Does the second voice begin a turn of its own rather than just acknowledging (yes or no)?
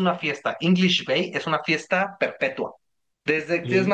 no